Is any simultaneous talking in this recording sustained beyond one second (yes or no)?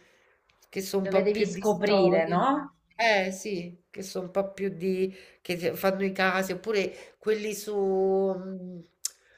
yes